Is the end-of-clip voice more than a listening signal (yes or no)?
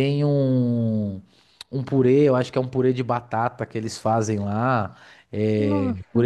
no